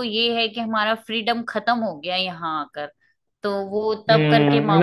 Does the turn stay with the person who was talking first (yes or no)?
no